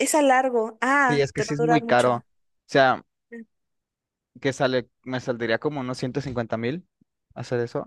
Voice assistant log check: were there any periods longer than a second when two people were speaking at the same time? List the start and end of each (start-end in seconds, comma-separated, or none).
1.0-2.2